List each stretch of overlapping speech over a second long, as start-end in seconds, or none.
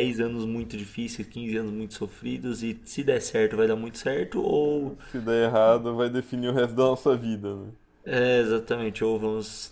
none